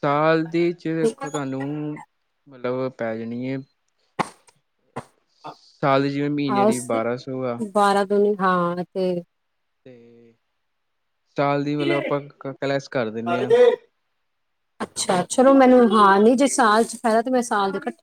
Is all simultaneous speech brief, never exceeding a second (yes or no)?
yes